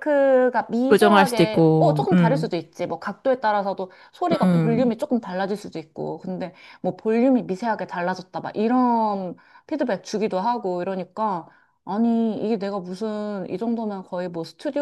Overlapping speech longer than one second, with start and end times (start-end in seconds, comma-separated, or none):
0.9-2.5